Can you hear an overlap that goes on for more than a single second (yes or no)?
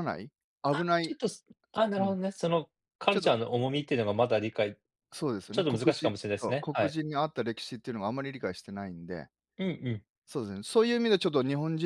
yes